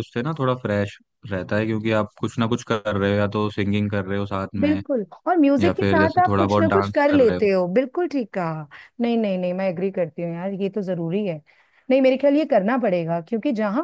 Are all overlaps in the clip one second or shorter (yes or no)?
no